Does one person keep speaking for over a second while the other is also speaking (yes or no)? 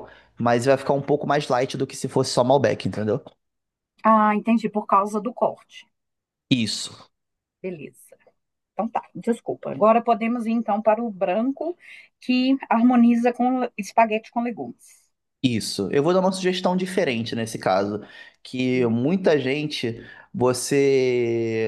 no